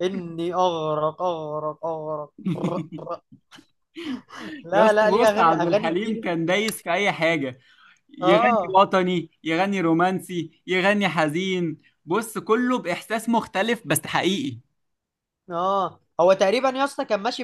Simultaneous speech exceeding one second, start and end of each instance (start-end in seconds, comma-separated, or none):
4.7-6.3